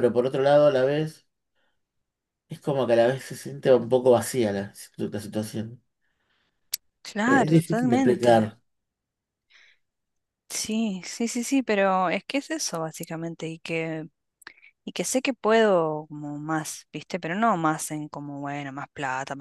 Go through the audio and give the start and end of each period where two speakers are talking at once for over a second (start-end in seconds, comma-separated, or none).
7.2-8.5